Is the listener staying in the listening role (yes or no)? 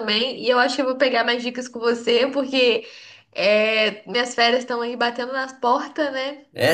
no